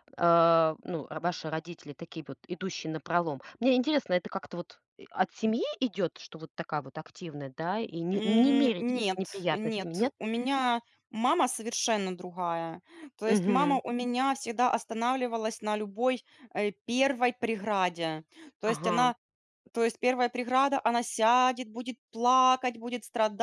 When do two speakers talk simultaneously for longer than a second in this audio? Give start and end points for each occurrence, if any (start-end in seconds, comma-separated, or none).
8.1-10.1